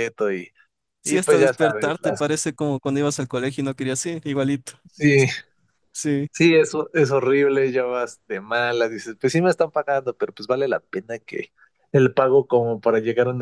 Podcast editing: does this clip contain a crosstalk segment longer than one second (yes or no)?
yes